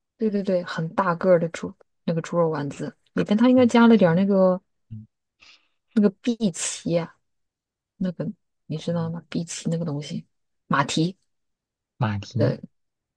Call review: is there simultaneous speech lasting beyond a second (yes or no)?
no